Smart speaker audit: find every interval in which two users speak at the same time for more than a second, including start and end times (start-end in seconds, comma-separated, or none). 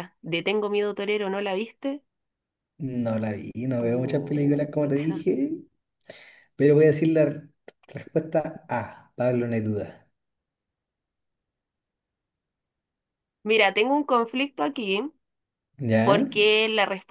3.8-5.2